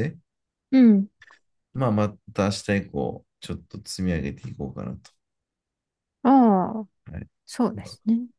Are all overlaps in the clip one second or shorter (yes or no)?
yes